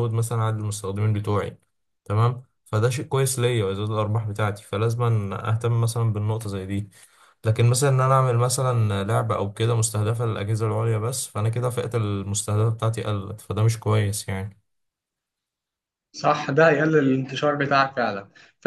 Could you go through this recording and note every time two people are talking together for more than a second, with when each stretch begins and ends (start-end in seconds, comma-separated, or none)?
none